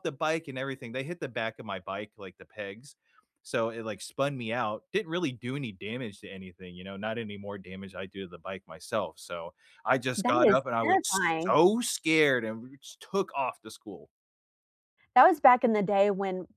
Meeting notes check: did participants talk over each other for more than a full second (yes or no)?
yes